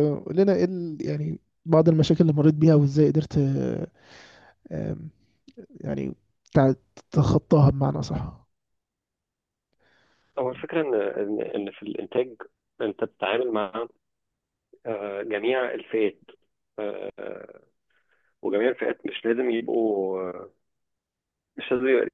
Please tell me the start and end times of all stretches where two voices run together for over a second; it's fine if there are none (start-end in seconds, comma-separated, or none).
none